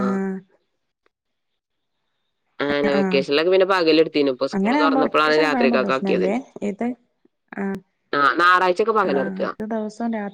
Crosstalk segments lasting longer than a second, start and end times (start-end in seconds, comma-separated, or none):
4.5-5.9